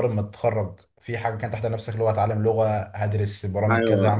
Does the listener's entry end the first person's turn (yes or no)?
yes